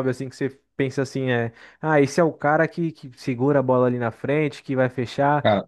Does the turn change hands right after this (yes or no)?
no